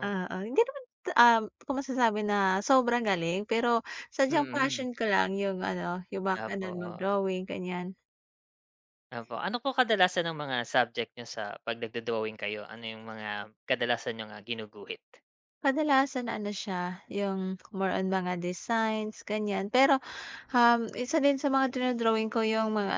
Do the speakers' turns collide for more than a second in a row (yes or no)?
no